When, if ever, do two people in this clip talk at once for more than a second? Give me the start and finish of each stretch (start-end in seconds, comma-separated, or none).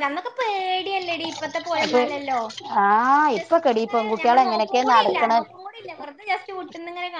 3.4-5.3